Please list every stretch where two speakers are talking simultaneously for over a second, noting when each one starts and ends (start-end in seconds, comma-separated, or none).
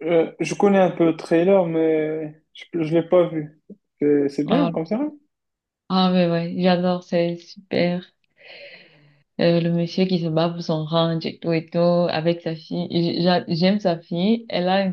none